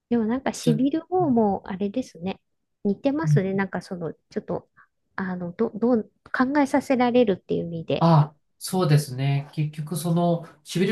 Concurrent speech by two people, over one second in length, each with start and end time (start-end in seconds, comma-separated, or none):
none